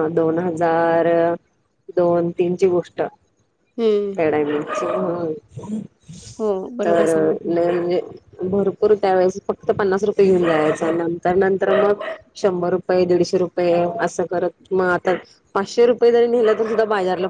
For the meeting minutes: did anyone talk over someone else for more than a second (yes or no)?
no